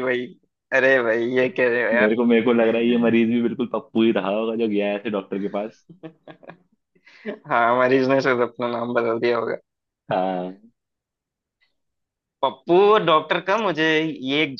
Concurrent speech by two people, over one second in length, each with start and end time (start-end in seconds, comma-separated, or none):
1.9-3.2